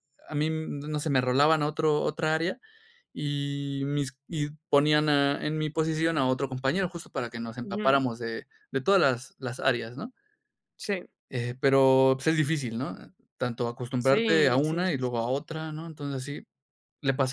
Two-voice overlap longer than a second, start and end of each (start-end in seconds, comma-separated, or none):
14.0-15.3